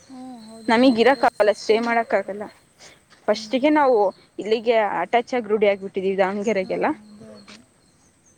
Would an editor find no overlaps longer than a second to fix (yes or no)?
no